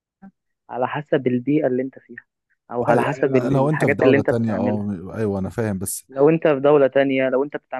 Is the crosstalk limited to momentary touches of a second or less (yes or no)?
no